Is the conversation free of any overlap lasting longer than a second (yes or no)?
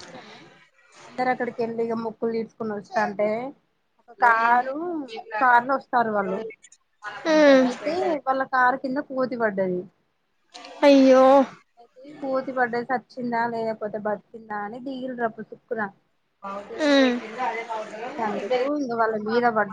yes